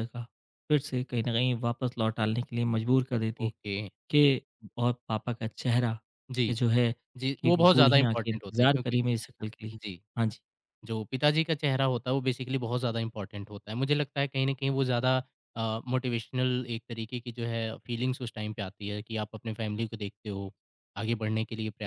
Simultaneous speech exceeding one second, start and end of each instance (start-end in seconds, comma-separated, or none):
7.4-9.0